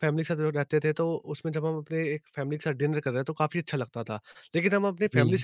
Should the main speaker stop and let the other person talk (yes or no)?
no